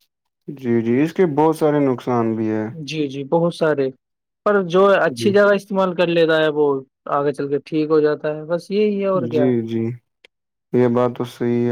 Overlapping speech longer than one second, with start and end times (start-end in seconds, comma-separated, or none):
none